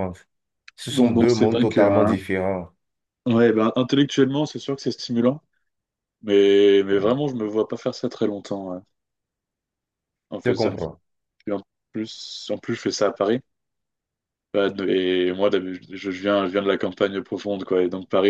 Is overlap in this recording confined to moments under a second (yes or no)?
no